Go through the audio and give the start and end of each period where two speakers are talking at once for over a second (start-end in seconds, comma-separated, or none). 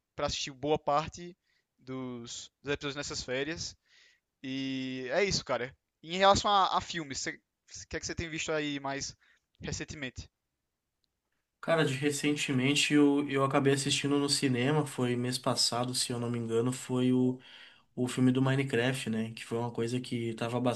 none